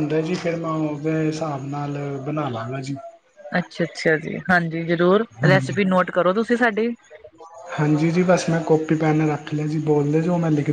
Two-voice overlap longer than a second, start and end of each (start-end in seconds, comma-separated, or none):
none